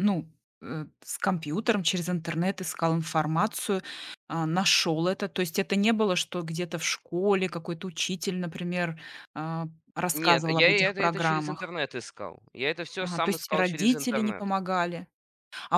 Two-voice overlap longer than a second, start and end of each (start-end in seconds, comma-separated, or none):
10.1-11.7, 13.0-14.5